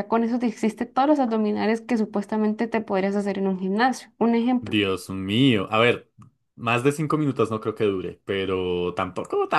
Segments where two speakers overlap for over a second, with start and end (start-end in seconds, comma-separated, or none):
none